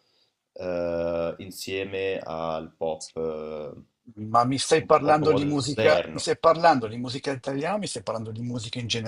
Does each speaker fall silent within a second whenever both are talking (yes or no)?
no